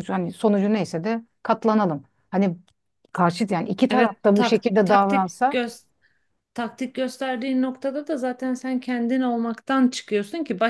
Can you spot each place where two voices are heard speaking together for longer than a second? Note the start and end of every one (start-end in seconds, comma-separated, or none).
3.9-5.6